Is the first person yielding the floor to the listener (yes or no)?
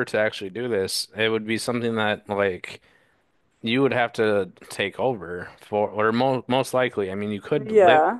yes